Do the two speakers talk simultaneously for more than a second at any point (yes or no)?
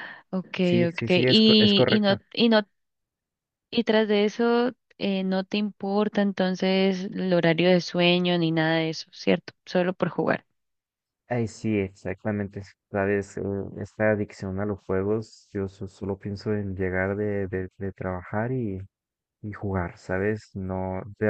yes